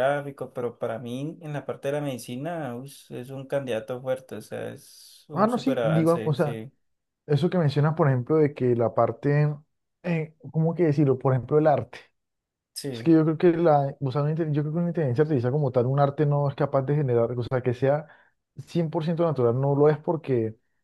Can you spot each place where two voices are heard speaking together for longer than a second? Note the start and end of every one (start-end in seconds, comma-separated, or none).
5.3-6.6